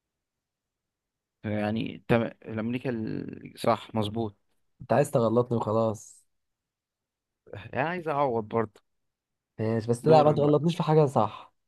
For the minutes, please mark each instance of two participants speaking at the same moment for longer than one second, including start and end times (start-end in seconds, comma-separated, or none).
none